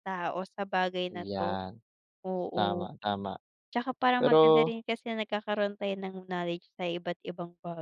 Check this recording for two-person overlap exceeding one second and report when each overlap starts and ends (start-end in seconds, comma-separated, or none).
none